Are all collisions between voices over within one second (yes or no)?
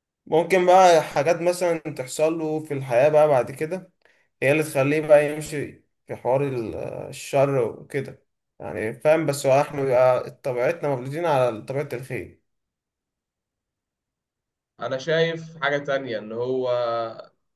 yes